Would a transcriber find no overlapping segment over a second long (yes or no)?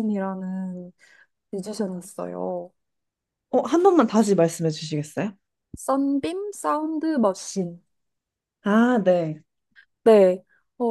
yes